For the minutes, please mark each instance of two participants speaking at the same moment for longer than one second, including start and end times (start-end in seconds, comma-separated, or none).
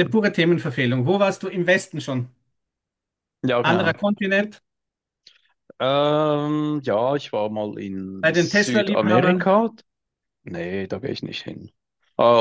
8.2-9.5